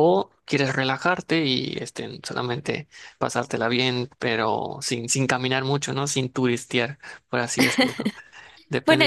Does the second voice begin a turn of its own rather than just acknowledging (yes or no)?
yes